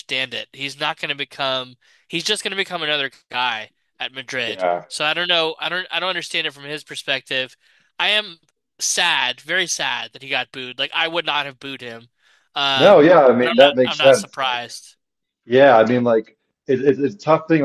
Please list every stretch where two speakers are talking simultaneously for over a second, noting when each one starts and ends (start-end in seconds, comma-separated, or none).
12.7-14.6